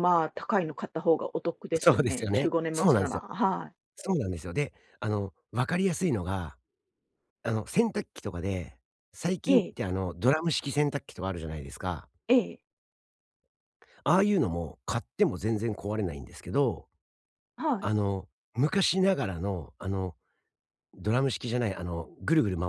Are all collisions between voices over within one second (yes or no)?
no